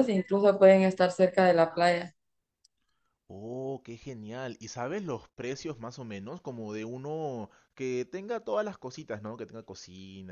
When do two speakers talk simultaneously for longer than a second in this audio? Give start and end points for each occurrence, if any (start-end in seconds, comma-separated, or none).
none